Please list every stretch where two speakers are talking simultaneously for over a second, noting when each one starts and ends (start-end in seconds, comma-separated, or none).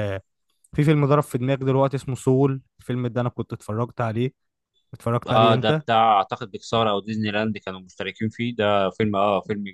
none